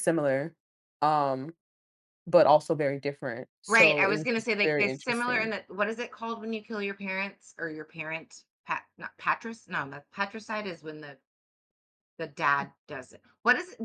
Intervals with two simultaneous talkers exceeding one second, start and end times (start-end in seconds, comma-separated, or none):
3.7-5.5